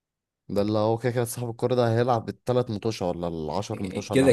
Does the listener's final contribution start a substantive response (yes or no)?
yes